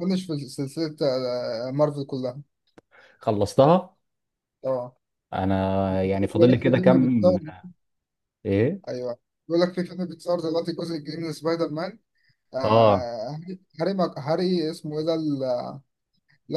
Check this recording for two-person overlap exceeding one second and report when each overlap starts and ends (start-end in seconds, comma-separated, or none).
6.1-7.4